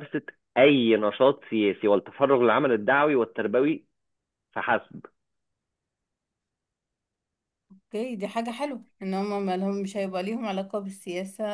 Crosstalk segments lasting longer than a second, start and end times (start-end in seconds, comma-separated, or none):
none